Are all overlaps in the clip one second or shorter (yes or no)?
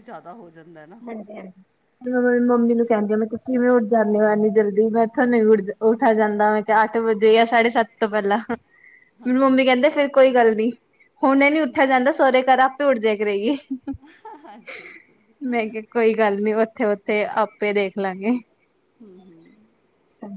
yes